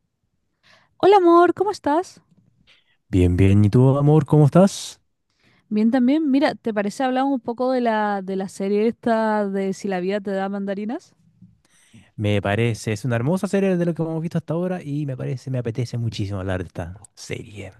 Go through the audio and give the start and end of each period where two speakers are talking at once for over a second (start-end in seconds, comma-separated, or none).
none